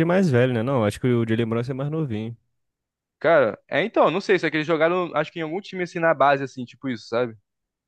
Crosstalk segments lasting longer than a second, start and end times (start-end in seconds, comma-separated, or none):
none